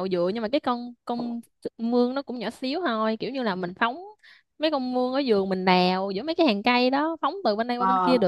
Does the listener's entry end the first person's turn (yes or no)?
no